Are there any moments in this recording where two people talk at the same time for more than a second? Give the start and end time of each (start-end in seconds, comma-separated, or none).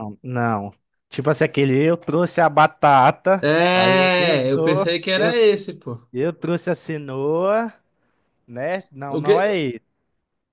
3.4-5.3